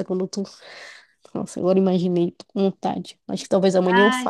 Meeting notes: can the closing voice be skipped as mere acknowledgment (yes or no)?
no